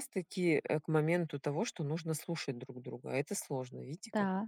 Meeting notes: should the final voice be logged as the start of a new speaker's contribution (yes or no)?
yes